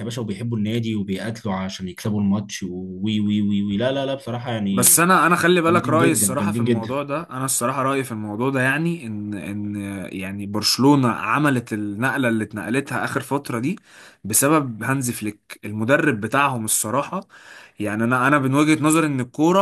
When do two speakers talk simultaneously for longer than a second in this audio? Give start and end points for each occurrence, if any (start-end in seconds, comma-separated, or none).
5.7-7.0